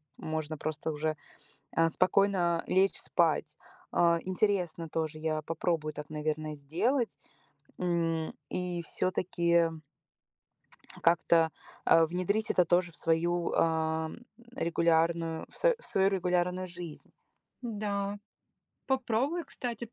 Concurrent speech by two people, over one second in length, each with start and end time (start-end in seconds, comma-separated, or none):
none